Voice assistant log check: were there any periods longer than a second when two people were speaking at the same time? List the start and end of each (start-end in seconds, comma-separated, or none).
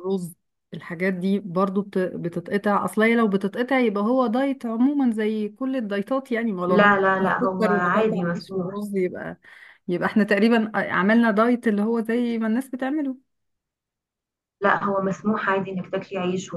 6.7-8.8